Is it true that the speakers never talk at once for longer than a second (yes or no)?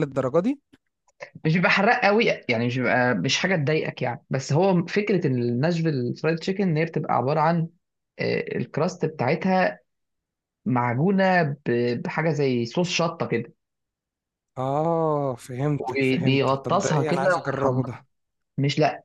no